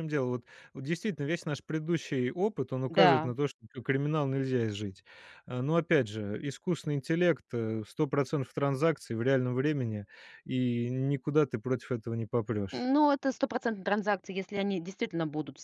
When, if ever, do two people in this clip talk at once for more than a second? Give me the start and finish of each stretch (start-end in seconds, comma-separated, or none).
none